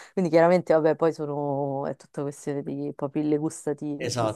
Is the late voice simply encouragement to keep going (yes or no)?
no